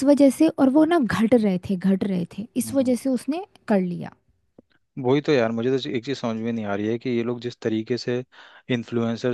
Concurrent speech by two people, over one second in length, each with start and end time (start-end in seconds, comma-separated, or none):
none